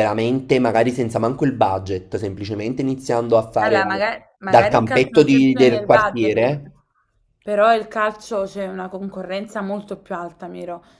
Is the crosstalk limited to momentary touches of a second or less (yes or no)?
no